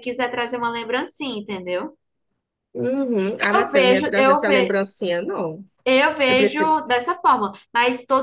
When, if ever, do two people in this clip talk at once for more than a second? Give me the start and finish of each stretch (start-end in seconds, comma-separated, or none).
3.5-4.7